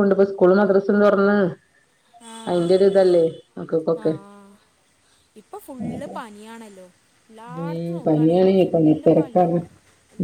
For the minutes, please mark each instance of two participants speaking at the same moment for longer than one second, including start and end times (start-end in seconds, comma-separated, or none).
7.6-9.6